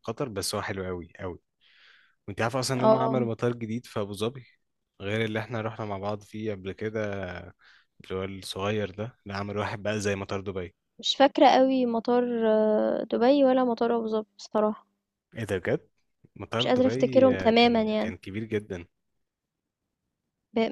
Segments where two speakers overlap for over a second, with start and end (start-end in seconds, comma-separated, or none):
16.6-18.1